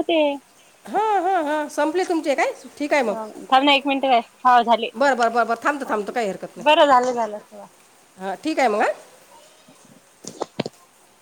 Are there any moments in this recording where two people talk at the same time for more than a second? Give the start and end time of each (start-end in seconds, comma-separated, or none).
none